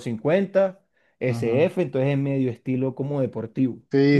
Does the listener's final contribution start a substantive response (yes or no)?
yes